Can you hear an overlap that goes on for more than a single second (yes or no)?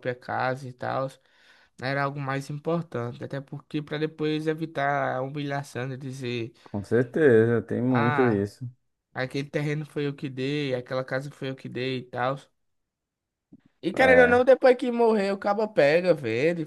no